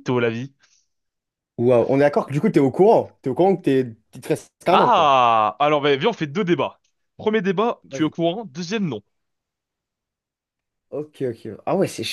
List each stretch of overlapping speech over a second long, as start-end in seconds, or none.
none